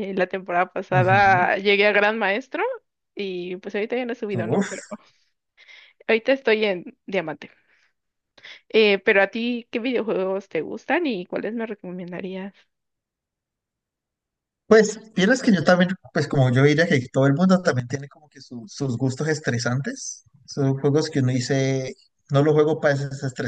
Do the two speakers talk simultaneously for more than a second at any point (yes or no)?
no